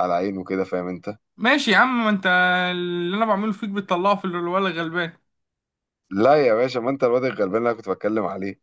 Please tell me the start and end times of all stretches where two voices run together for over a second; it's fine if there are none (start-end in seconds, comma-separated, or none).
none